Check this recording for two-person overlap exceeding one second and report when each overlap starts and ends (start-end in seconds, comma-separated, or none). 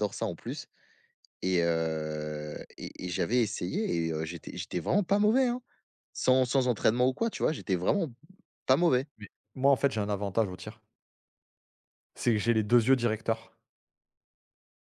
none